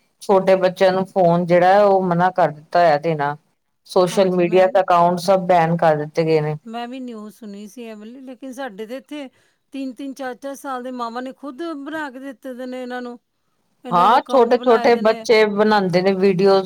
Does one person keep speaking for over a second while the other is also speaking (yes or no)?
yes